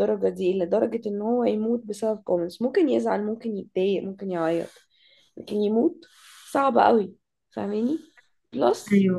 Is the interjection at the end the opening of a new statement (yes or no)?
no